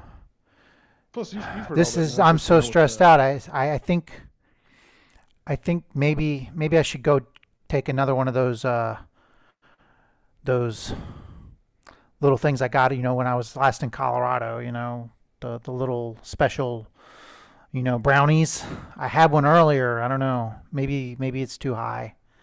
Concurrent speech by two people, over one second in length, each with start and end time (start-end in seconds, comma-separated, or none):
1.7-3.1